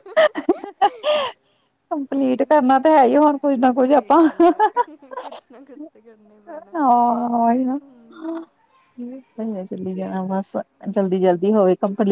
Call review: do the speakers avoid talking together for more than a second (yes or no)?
no